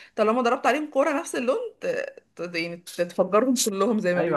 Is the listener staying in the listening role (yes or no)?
no